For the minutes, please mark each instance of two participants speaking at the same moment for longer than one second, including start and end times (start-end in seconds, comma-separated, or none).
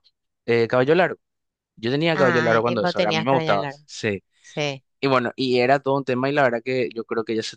2.1-3.8